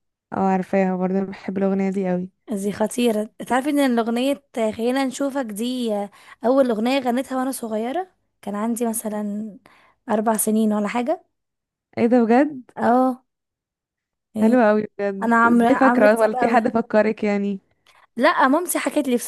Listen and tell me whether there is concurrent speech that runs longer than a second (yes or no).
yes